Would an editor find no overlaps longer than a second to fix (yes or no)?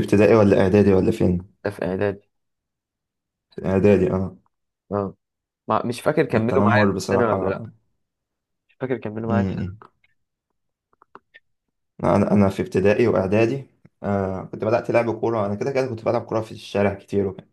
no